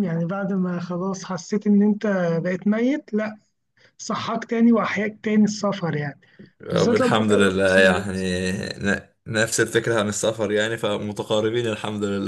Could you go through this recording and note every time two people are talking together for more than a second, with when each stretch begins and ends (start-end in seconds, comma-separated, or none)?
6.7-8.4